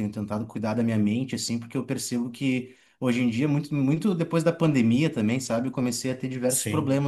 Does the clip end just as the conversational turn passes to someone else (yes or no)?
no